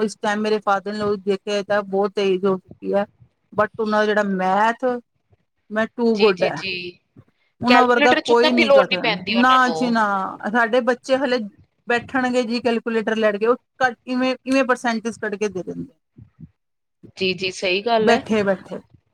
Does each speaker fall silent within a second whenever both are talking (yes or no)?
no